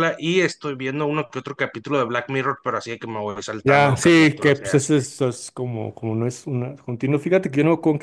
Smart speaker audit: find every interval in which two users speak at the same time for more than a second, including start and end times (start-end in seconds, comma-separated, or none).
3.6-4.9